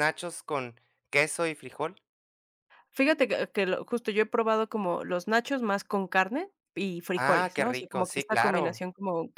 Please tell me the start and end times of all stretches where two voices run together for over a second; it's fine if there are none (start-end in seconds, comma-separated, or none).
7.2-8.8